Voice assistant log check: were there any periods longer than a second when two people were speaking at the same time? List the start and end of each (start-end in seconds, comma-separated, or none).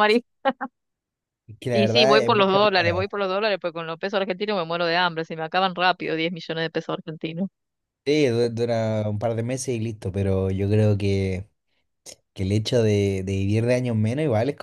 1.7-3.1